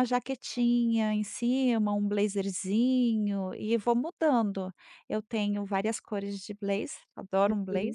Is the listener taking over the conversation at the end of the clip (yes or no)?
yes